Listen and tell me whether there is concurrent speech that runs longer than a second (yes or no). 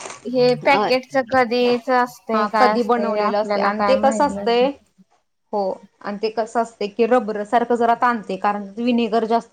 yes